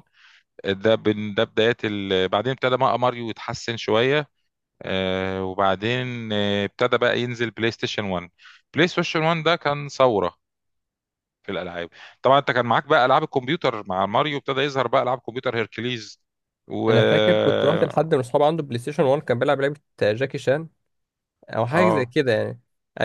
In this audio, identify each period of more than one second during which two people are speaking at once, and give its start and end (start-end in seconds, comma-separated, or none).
16.9-18.1